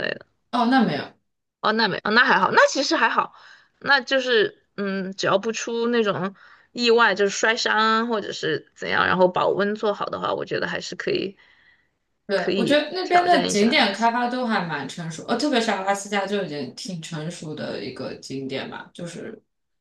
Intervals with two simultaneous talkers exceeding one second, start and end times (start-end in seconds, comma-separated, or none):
12.3-13.8